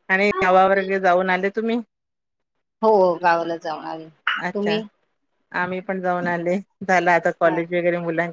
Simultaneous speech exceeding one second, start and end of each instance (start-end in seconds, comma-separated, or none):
none